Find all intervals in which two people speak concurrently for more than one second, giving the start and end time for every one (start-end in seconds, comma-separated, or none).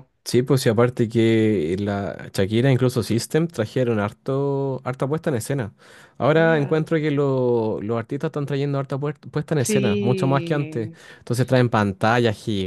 9.6-11.0